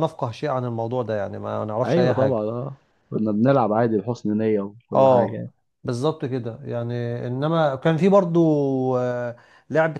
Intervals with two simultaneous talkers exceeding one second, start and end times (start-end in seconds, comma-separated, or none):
none